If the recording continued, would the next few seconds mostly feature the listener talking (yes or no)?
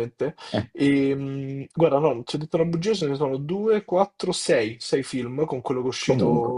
no